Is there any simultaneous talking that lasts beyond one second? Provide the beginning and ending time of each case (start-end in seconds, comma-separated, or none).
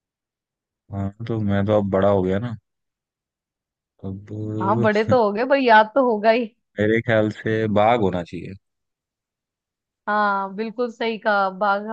none